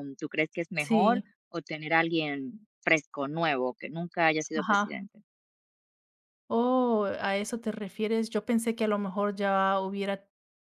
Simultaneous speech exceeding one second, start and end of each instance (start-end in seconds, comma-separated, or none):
none